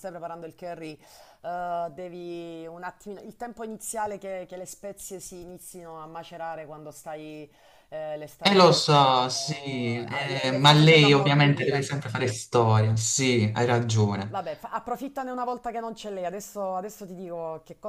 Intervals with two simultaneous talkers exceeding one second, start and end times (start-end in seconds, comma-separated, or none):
8.4-11.9